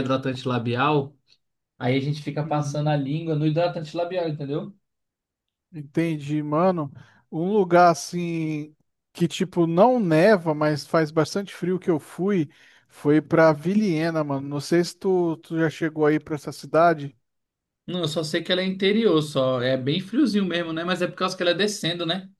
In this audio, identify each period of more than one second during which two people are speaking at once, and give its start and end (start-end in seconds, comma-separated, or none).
none